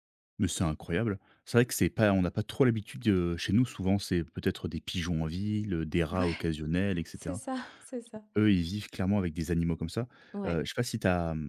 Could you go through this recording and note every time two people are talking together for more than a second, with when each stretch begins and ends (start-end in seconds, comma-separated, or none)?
none